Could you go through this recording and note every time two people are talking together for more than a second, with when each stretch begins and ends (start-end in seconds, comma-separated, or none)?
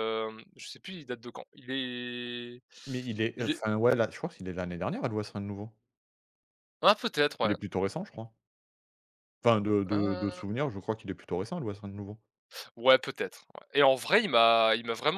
none